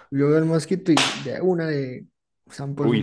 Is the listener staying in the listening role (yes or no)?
no